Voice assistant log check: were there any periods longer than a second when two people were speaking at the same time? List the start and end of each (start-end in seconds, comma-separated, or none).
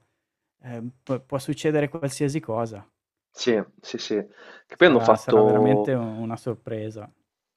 4.7-5.9